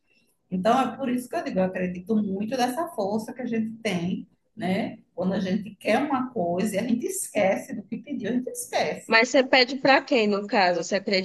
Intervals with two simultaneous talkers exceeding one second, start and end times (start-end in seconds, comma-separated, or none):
none